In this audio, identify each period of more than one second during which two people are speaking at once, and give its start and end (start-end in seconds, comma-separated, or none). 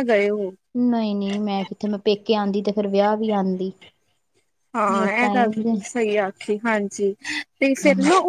none